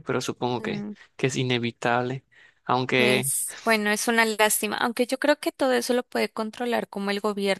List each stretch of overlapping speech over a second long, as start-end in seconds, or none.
none